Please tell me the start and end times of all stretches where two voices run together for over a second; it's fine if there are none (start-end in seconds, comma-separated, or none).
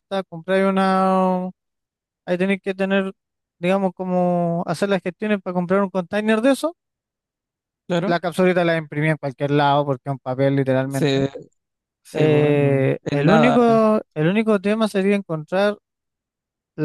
12.1-13.6